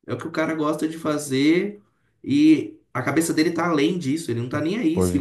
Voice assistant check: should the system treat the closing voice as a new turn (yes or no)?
no